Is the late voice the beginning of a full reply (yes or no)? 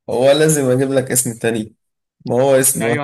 yes